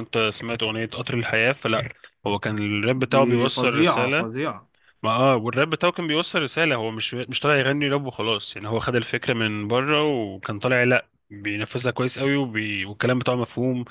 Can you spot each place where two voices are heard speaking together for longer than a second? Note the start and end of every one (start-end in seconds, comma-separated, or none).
3.0-4.3